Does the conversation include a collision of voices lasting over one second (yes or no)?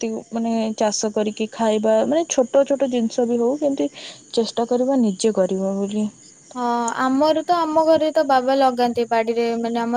no